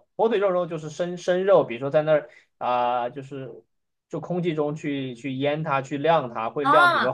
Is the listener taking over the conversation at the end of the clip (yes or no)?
yes